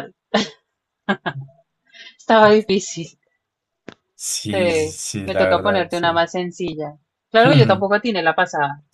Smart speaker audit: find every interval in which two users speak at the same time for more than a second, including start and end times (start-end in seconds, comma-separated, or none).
4.5-6.1